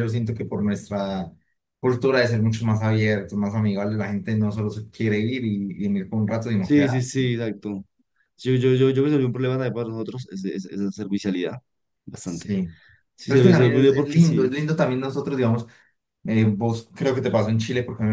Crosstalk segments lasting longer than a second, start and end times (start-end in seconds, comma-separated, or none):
13.2-14.5